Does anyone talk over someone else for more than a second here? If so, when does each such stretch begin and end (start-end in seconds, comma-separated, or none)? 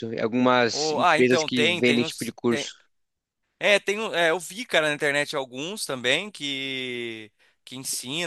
0.7-2.4